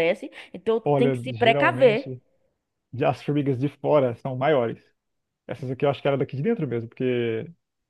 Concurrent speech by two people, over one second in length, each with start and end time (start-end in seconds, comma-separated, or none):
0.8-2.1